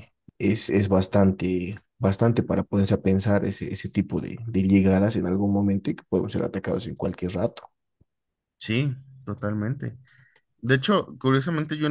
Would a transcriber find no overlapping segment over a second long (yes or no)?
yes